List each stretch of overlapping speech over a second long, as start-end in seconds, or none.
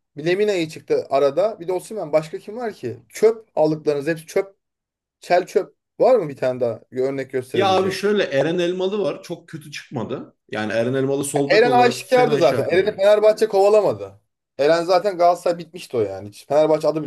11.5-13.0